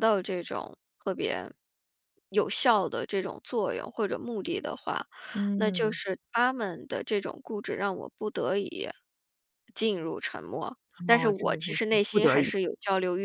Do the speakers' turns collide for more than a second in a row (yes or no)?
yes